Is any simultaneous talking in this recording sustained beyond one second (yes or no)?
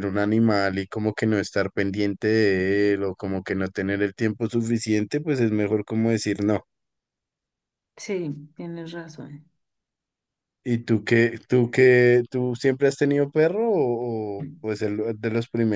no